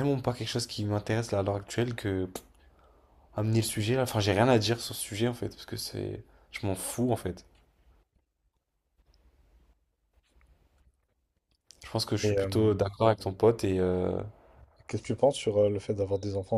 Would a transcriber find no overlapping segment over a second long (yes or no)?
yes